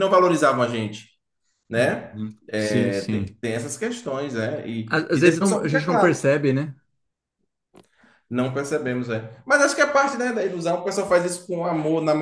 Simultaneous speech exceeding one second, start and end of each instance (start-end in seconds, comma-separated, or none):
1.8-3.2, 4.9-6.2